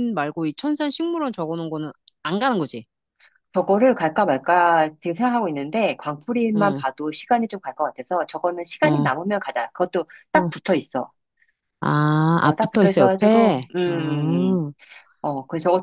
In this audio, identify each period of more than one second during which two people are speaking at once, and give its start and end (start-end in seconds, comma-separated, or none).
12.4-14.6